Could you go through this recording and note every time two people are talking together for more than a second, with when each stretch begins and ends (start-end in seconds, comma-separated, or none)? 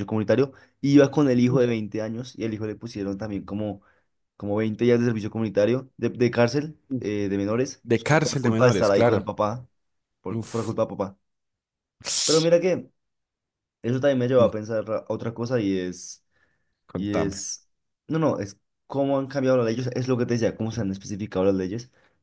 7.8-9.3